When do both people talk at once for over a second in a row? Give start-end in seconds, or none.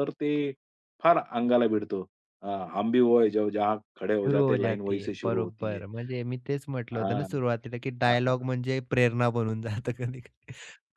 4.2-5.8